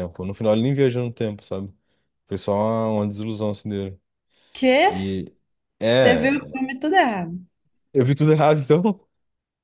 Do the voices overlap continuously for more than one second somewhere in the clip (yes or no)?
no